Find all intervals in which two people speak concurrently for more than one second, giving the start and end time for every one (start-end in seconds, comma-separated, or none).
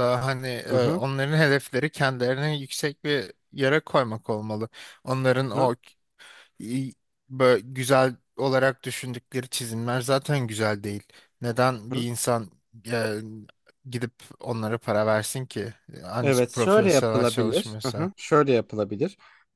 16.2-18.1